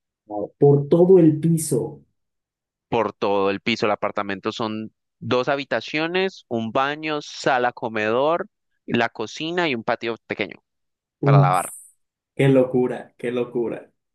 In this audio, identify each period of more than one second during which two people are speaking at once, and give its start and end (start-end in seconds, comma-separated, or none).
none